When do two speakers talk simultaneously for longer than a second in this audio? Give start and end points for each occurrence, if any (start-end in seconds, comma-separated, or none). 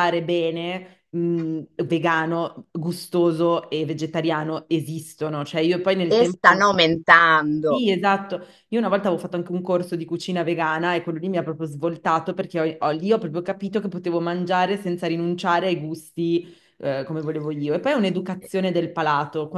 none